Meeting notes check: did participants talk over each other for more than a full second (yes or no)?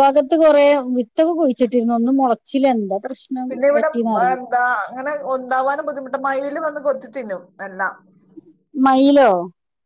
no